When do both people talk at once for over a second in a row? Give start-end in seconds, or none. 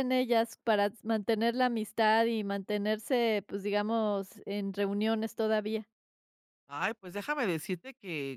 none